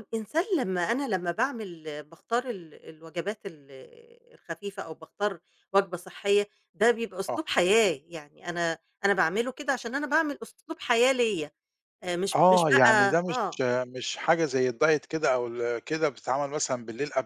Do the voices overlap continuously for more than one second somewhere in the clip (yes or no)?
yes